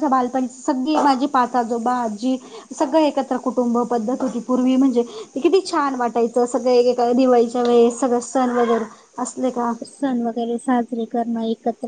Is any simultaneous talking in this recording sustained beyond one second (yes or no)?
no